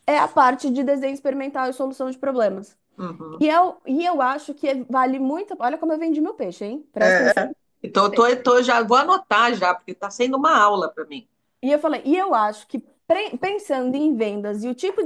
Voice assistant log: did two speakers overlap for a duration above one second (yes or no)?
no